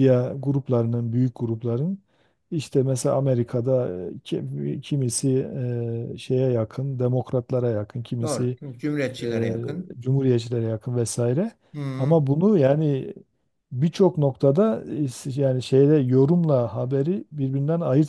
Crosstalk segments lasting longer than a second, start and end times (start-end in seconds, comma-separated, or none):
none